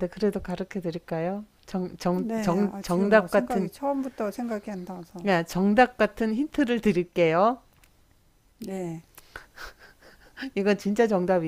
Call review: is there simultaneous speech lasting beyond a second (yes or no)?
yes